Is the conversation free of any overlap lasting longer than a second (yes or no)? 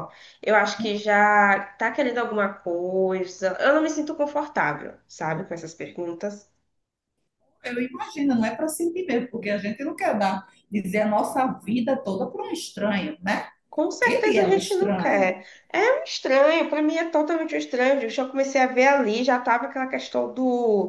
no